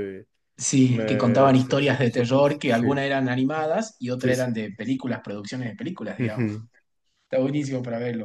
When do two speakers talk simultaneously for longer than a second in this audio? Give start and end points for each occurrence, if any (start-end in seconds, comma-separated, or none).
0.9-2.9